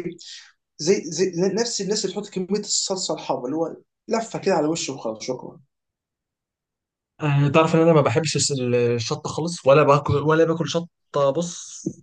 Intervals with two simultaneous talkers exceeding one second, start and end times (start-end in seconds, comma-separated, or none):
none